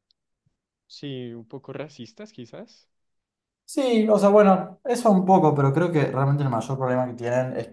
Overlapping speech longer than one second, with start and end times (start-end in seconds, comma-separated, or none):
none